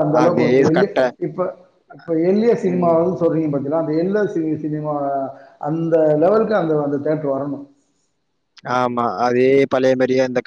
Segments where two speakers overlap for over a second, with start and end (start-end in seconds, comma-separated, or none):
none